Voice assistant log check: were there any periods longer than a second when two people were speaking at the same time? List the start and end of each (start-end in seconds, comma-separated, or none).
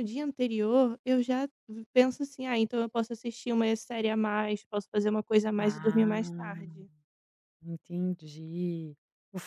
5.6-6.8